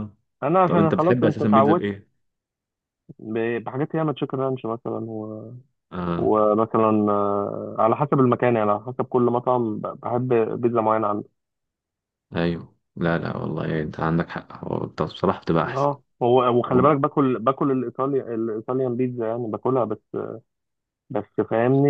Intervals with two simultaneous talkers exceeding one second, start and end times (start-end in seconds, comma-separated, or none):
0.7-1.9